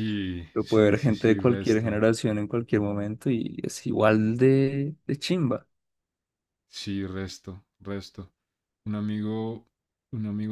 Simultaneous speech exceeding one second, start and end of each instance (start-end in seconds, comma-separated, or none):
0.5-2.0